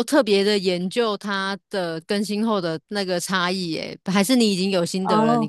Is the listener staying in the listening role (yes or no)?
no